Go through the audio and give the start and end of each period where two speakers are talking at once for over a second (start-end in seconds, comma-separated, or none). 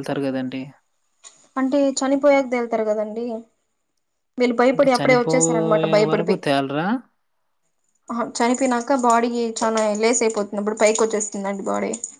4.7-6.4